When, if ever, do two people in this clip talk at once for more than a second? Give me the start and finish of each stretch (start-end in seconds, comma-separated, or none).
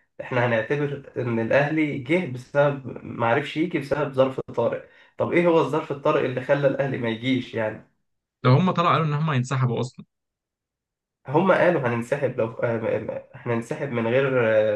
none